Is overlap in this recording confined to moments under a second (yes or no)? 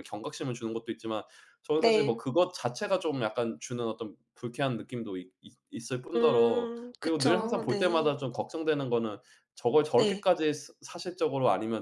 no